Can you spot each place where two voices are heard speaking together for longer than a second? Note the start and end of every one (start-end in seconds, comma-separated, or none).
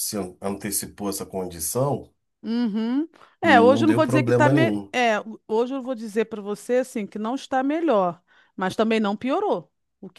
3.4-4.9